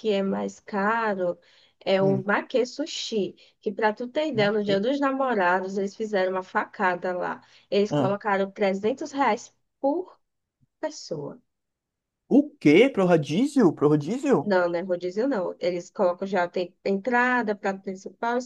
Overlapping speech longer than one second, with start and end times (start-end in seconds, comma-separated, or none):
none